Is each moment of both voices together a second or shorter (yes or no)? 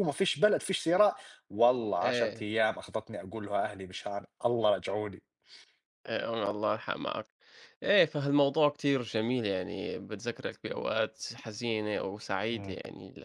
yes